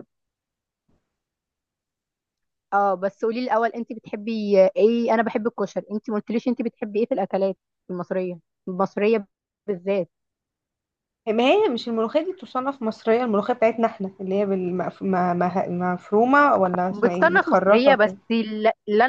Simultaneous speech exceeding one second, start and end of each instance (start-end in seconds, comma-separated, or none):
16.9-18.2